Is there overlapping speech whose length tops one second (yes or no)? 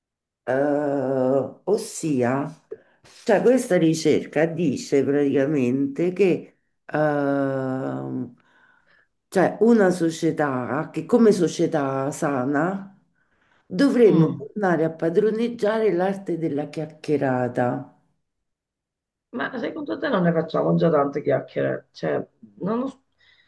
no